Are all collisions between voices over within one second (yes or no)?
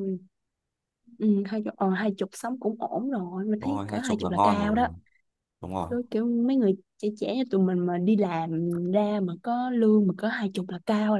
no